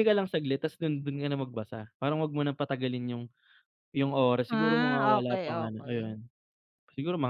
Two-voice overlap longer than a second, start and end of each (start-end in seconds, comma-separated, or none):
4.5-6.2